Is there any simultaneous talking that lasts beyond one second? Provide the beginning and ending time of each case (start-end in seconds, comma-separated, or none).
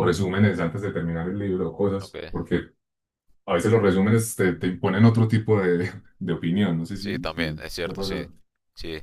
7.0-8.3